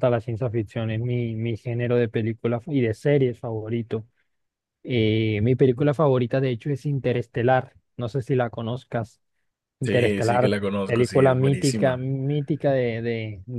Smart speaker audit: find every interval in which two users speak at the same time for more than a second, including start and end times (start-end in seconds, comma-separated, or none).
9.8-12.1